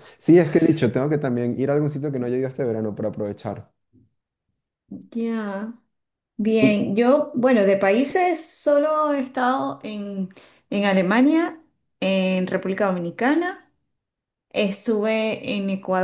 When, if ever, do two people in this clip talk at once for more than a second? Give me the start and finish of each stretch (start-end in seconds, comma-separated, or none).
none